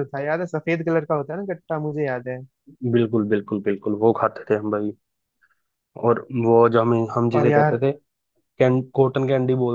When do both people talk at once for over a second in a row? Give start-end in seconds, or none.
none